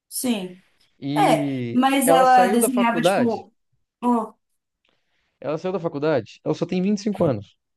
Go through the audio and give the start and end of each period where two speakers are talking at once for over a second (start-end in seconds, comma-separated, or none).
1.1-3.5